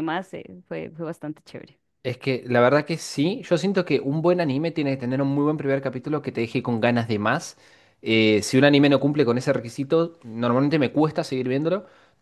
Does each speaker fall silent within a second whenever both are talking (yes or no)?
yes